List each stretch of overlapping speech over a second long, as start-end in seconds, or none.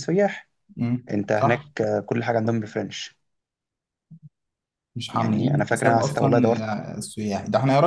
5.1-6.7